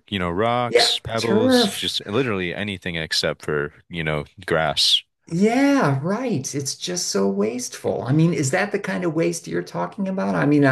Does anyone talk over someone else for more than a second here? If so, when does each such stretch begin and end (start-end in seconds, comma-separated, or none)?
0.7-2.0